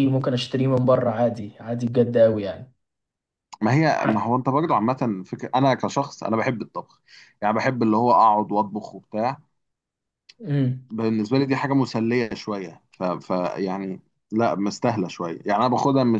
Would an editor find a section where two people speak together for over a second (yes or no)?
no